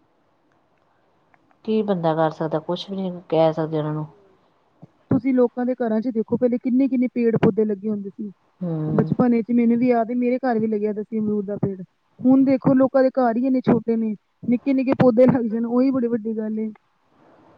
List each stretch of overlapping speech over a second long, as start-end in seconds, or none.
none